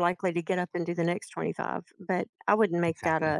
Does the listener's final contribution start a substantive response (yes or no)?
no